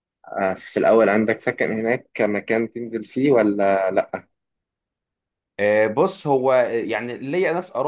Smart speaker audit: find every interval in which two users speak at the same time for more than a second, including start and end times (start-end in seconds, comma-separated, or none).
none